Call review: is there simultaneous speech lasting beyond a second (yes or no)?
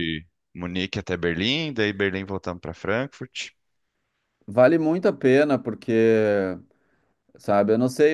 no